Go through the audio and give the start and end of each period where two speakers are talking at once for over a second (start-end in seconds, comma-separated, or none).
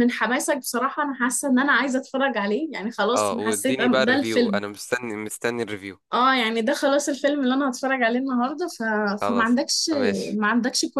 3.1-4.6